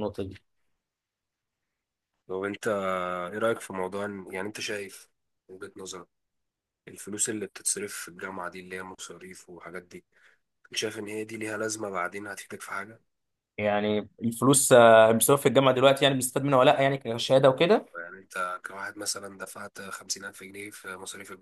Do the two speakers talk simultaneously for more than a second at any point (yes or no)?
no